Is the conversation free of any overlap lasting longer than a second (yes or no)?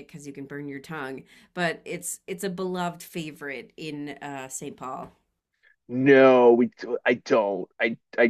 yes